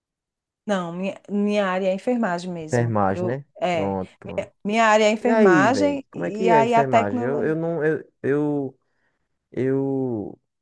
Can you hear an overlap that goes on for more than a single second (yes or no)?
yes